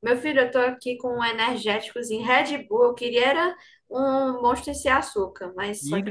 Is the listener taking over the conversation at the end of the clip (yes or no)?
yes